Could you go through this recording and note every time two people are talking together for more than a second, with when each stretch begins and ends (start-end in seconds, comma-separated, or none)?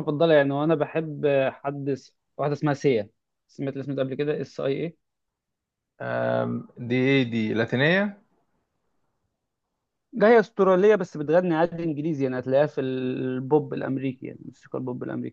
none